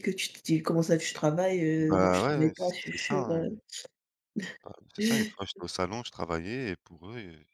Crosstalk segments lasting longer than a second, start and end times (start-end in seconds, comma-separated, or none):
1.8-3.5